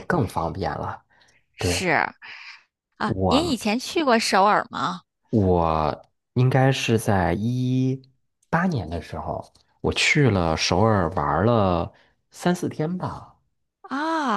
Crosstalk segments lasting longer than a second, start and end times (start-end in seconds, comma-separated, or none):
none